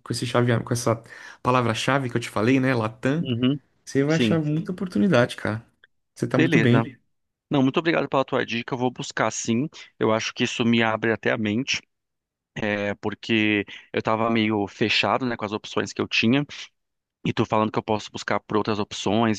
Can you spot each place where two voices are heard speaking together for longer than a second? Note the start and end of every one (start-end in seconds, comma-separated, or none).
none